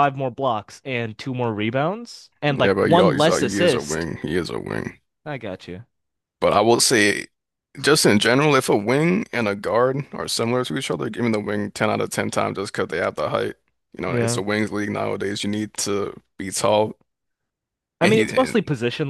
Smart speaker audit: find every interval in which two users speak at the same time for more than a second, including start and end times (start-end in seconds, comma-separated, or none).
2.5-4.1